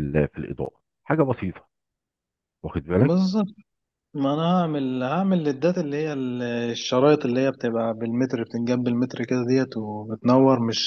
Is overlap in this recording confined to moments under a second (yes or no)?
yes